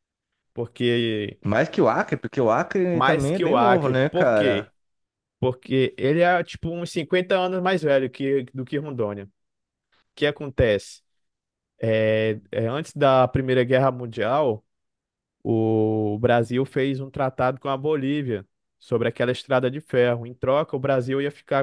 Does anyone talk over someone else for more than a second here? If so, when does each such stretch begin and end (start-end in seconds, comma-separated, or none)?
3.0-4.7